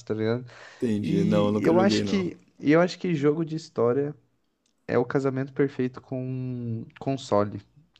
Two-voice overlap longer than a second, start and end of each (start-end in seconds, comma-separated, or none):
1.0-2.3